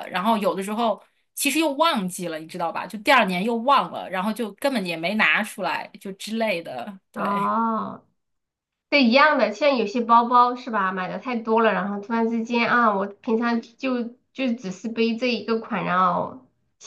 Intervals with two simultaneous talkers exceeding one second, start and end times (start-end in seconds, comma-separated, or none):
none